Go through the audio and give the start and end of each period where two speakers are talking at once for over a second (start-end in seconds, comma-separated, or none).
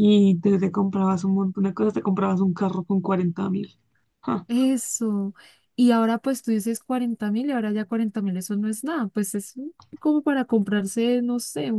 none